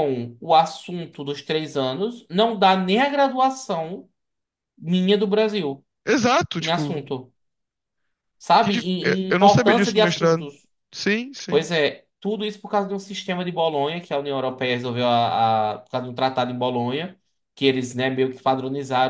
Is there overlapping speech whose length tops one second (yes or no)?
yes